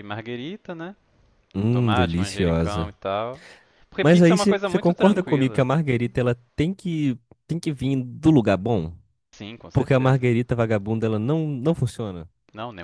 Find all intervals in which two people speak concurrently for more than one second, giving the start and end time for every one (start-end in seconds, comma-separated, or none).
1.6-2.9, 4.0-5.7